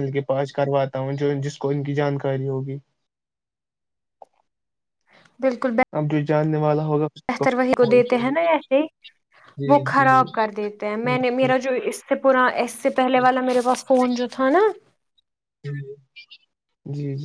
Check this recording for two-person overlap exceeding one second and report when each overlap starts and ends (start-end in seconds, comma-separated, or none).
none